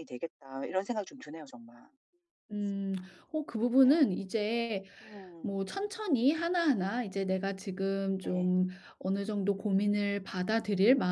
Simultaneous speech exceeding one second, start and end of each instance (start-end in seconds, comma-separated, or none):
none